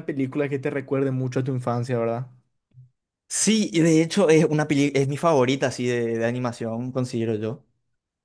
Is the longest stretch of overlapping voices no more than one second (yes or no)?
yes